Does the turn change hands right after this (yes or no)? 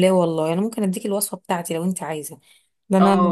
yes